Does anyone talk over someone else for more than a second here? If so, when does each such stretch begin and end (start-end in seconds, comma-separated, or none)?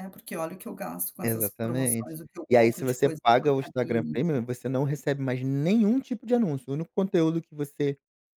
1.2-4.4